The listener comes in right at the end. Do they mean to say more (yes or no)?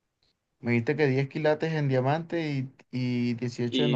yes